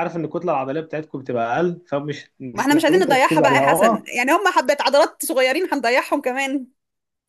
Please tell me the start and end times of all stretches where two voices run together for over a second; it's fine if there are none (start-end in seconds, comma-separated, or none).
2.5-4.1